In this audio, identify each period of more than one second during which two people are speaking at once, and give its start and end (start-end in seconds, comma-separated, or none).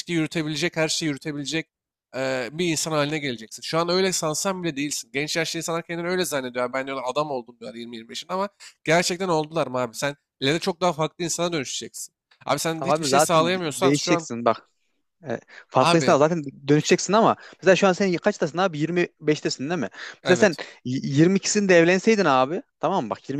12.8-14.3